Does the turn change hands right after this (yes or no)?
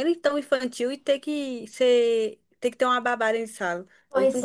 yes